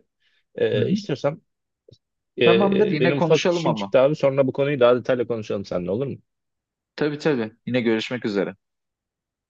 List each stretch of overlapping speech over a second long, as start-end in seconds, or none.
2.4-3.9